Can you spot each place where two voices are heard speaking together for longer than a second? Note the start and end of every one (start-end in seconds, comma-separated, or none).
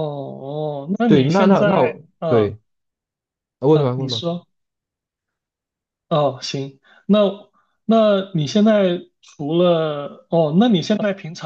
1.1-2.6